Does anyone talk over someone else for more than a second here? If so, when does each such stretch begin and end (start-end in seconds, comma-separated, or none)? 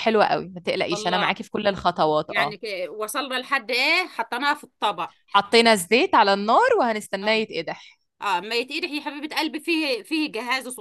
none